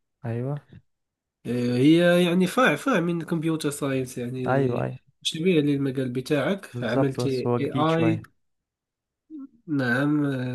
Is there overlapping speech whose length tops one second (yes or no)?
yes